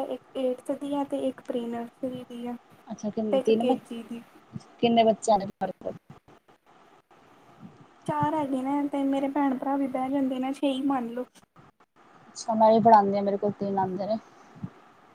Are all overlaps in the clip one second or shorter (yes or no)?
yes